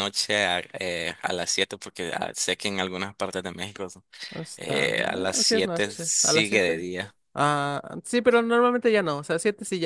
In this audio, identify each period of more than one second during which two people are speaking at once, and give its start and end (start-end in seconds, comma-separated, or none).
4.6-6.9